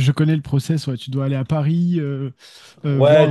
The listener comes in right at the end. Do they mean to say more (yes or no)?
yes